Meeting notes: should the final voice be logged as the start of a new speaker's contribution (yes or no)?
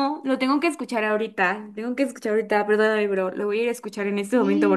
yes